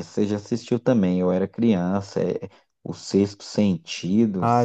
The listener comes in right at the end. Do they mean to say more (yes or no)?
yes